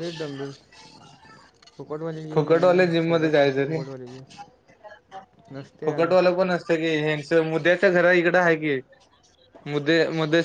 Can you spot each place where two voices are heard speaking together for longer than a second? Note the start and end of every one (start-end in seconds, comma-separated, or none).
2.3-3.8